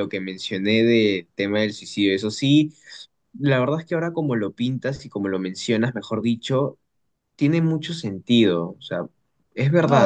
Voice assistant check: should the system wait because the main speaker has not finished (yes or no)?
no